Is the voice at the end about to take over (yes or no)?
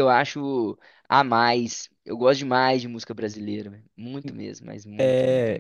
yes